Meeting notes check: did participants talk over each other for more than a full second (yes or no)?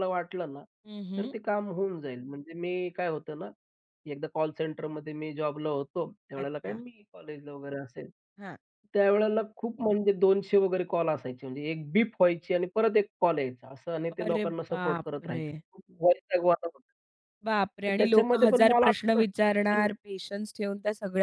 yes